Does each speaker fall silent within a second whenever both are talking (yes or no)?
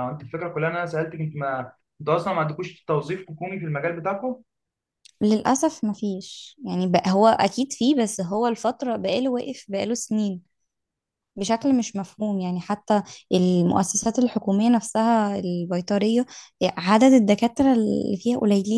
yes